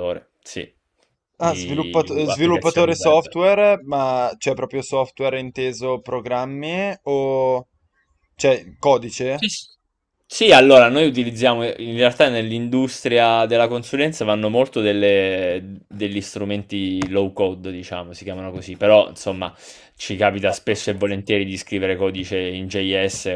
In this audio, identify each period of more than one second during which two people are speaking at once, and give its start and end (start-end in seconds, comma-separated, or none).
1.4-3.2